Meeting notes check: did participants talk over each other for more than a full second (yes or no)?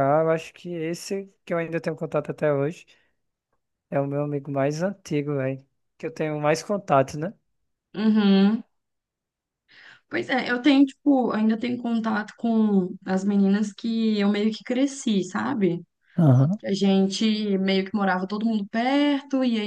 no